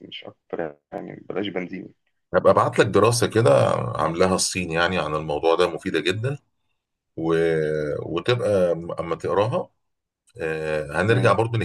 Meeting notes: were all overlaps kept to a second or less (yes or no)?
yes